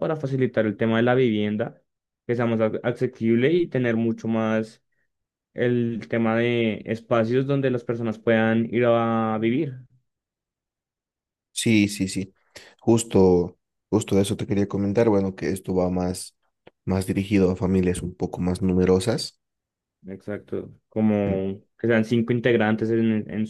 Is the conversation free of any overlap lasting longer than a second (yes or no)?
yes